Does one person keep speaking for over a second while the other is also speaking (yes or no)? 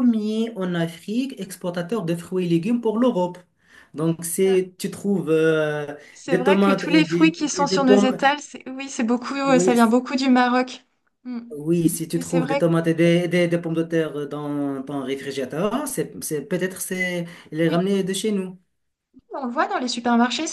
yes